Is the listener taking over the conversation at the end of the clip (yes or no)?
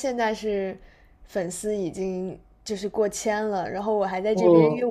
no